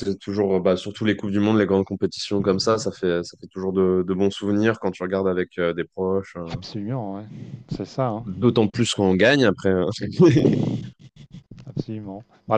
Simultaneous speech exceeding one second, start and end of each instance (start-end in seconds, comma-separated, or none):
none